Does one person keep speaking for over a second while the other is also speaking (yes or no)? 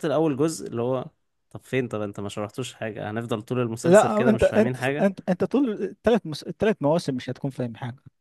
yes